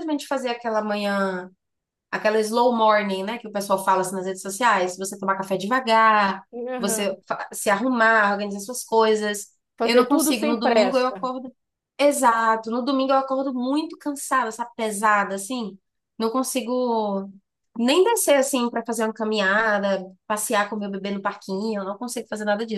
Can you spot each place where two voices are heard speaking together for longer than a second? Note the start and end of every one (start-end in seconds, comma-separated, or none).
9.8-11.3